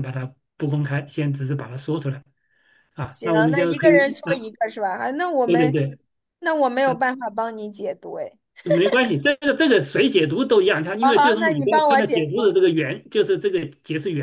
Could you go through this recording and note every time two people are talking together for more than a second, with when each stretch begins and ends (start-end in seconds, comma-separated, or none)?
3.0-4.5, 11.0-12.5